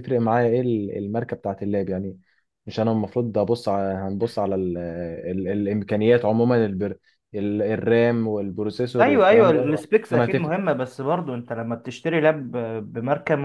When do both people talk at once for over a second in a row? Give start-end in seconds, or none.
9.0-10.5